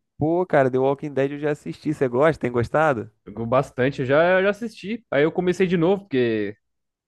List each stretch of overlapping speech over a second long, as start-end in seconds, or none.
none